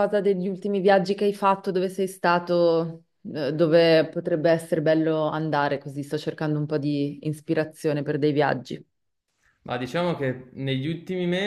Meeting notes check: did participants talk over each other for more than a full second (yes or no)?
no